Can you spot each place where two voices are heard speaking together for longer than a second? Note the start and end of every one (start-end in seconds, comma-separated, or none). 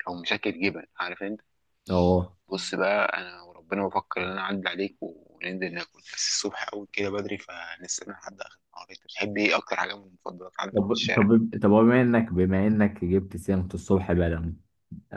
none